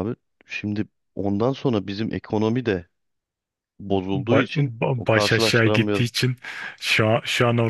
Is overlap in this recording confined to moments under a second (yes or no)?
no